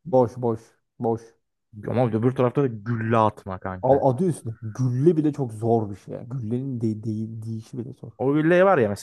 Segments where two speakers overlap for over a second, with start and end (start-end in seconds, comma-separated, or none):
none